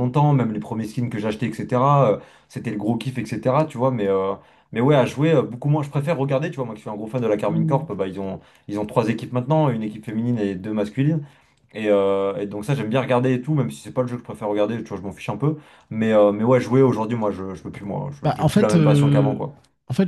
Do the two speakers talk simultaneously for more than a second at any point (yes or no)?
yes